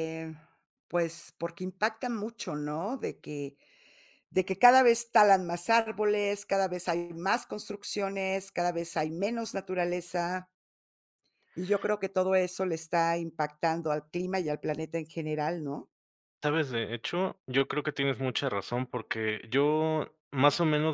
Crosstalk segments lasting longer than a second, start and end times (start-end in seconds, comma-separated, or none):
none